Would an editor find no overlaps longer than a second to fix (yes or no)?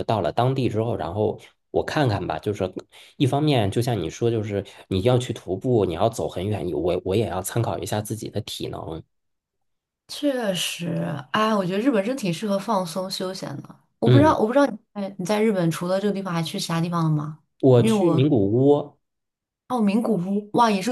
yes